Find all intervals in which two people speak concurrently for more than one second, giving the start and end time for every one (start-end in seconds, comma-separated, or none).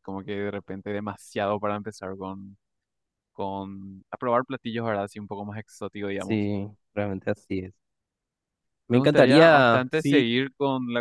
8.9-10.3